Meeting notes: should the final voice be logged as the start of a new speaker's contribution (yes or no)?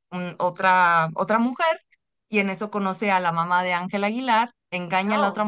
no